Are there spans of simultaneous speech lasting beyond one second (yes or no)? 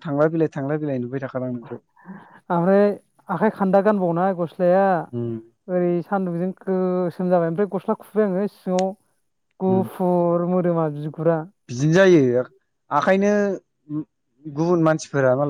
no